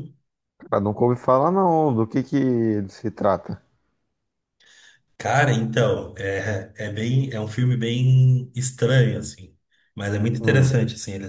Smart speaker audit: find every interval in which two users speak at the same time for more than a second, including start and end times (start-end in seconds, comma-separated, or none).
none